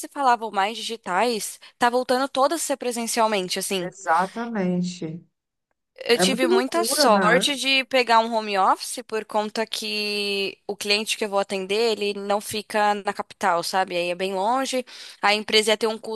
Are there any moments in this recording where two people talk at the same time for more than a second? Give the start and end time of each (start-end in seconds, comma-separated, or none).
6.1-7.5